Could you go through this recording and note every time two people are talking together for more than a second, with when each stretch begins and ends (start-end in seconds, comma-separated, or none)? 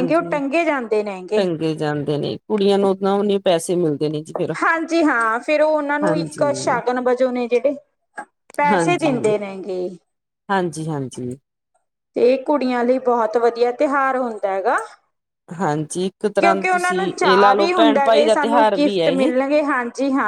16.4-19.3